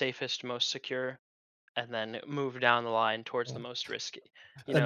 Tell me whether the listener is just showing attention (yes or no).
no